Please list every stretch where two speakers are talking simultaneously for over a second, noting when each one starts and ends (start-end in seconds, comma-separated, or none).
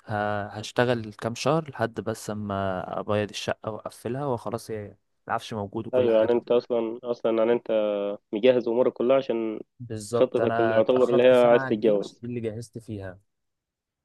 10.1-12.2